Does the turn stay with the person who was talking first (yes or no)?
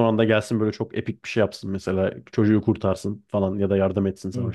no